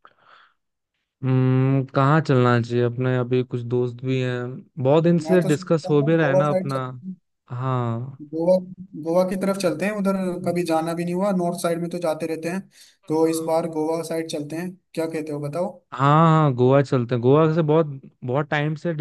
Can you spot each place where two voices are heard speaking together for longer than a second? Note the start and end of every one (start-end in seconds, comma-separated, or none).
5.2-6.8